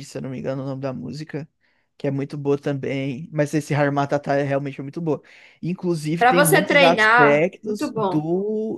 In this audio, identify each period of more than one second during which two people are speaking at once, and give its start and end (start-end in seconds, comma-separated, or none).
6.2-8.2